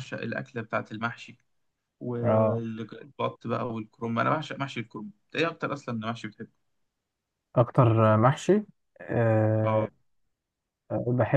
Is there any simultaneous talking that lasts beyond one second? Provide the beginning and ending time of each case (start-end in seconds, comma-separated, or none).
none